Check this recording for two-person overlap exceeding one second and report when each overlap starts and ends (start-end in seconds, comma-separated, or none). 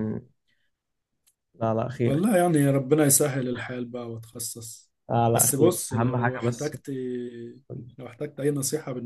5.3-6.8